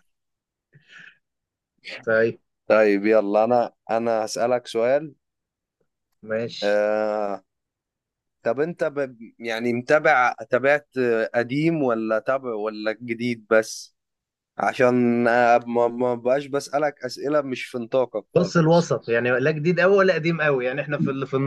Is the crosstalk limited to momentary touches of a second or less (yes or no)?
yes